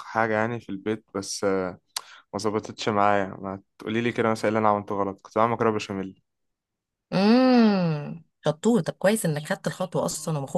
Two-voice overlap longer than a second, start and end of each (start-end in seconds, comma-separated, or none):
none